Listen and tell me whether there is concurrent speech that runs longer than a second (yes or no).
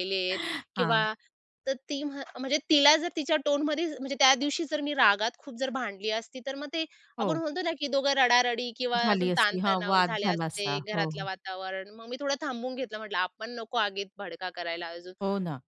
yes